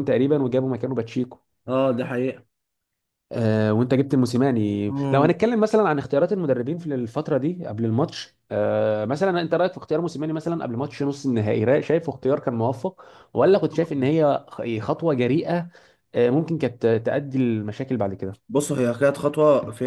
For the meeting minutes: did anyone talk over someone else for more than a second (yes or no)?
no